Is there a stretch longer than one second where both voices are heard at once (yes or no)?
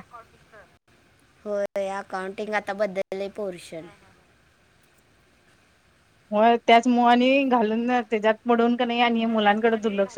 no